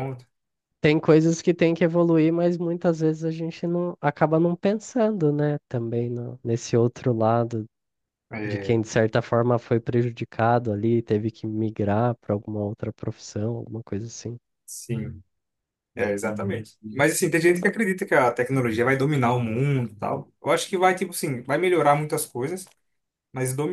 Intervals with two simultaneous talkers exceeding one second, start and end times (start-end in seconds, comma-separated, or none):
none